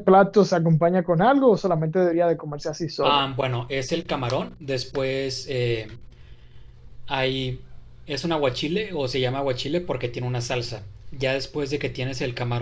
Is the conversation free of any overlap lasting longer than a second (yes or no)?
yes